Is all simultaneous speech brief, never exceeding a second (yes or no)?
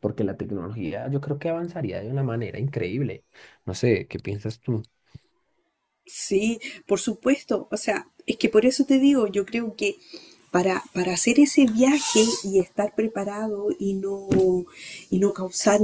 yes